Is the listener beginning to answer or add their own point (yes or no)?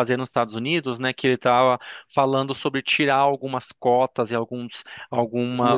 yes